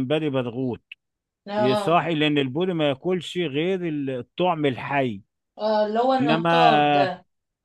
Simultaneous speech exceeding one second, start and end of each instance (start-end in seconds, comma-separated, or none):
none